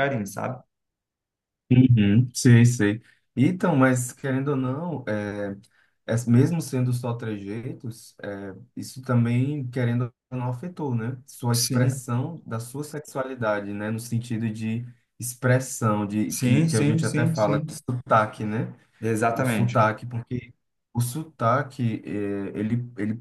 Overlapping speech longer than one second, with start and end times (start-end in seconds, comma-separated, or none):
16.3-17.7